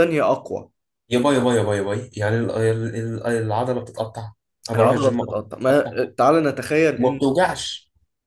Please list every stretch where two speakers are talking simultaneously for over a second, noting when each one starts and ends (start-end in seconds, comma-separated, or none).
4.7-6.0